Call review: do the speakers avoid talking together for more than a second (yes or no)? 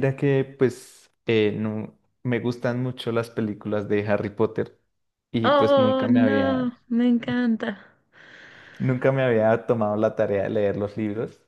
no